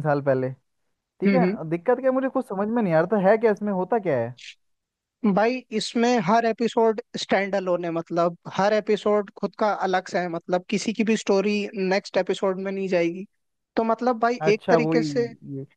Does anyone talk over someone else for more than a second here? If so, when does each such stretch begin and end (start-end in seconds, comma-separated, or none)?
none